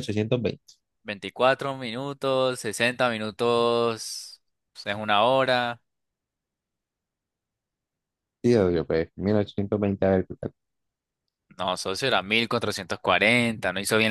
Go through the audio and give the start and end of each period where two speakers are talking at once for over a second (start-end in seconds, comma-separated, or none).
none